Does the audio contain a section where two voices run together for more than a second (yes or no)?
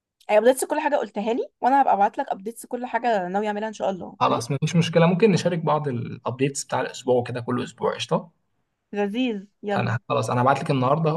no